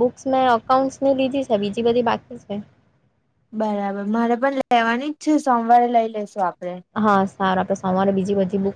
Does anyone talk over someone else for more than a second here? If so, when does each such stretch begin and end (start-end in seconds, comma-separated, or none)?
none